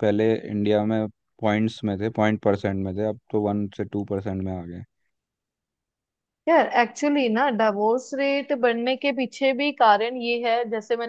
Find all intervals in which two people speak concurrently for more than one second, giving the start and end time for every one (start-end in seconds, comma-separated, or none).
none